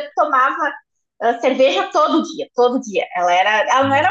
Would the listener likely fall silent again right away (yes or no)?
yes